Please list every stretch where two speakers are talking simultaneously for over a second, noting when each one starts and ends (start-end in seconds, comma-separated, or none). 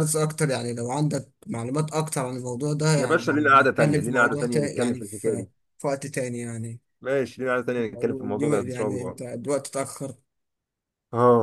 3.0-5.5, 7.8-9.2